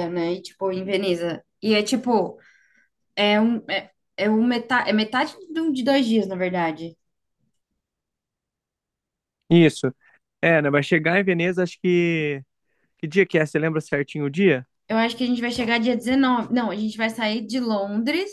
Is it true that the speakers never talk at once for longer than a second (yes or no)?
yes